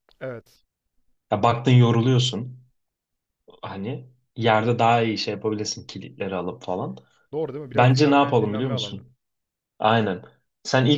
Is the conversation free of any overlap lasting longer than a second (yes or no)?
no